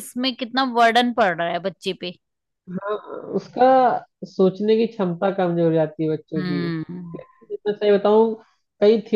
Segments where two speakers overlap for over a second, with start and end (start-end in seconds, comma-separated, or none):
none